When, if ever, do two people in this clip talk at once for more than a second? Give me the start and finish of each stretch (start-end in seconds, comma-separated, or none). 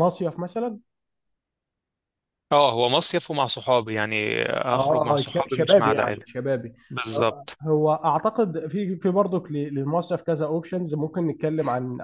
4.7-6.2